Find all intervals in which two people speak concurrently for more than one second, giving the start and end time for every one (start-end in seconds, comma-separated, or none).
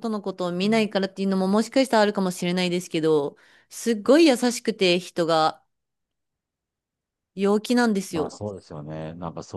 none